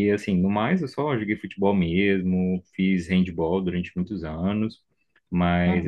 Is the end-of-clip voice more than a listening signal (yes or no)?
no